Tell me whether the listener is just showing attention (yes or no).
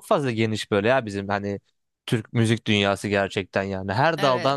yes